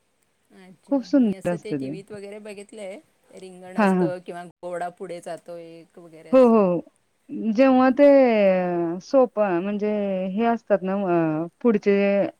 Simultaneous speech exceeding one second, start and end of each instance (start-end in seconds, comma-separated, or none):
none